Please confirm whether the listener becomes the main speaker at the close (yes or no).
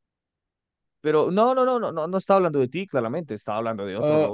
yes